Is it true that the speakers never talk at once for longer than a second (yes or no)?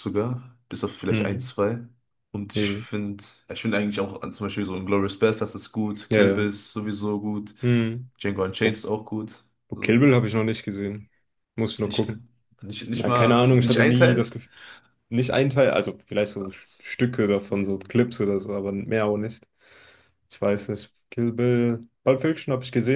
no